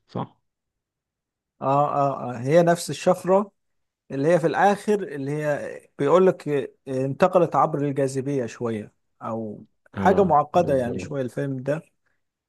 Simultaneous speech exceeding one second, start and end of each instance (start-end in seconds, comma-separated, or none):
9.9-11.2